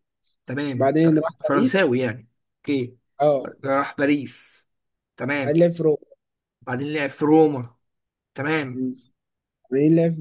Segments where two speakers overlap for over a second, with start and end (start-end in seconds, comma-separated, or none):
0.7-2.0